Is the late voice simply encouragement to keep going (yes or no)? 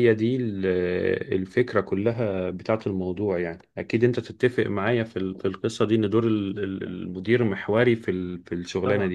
no